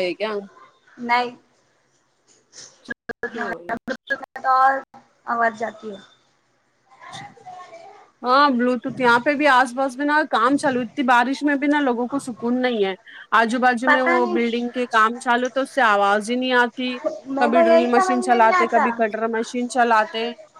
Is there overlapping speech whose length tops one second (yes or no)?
yes